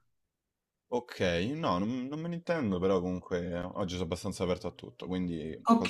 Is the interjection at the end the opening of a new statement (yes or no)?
yes